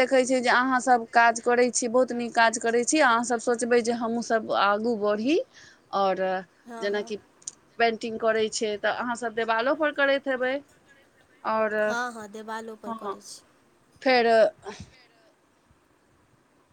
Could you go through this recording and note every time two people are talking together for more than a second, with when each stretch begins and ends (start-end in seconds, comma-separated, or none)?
none